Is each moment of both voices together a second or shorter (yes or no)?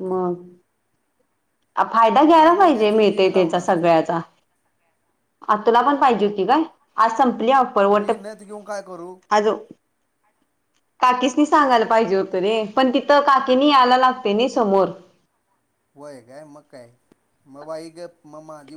no